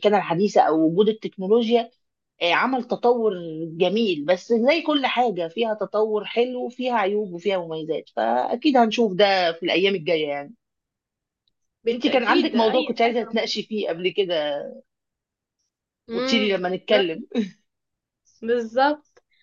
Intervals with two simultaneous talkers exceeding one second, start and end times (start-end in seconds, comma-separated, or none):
11.9-13.3